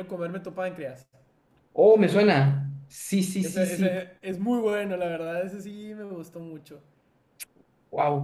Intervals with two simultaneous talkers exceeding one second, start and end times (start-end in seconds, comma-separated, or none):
none